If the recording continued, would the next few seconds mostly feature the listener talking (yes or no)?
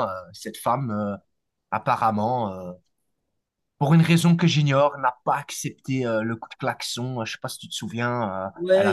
yes